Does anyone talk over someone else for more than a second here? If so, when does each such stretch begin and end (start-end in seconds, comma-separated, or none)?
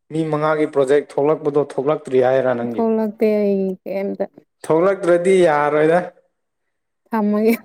none